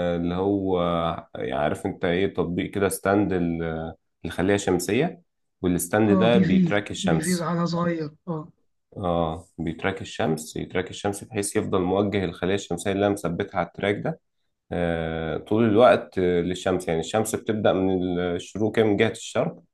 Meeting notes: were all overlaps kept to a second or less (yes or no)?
no